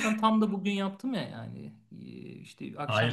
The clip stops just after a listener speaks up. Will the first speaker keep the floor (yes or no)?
no